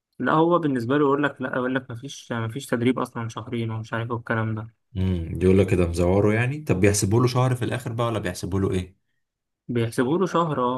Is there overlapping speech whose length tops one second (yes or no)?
no